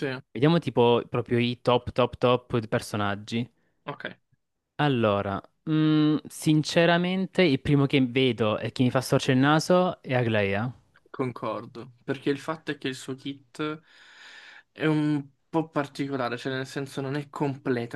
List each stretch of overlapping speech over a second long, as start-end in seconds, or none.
none